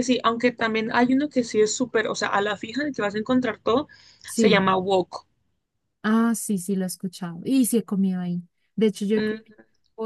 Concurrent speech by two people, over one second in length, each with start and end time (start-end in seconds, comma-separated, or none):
none